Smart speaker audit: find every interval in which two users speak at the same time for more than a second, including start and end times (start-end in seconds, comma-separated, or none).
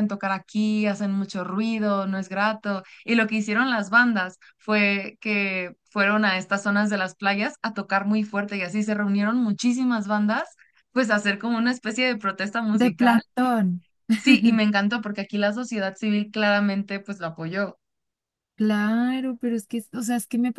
none